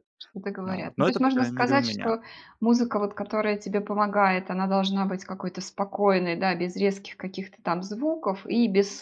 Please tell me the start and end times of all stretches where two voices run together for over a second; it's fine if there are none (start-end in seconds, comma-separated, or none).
0.6-2.2